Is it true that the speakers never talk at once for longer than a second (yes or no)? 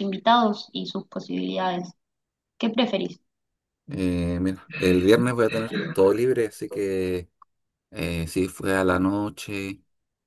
yes